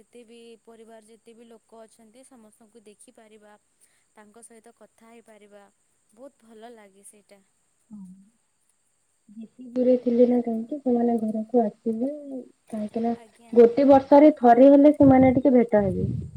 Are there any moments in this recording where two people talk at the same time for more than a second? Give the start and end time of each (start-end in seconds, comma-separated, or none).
none